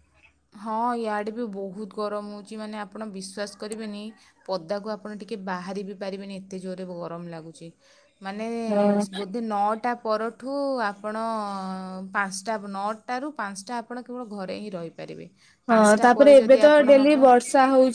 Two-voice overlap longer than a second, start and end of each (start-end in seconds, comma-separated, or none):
none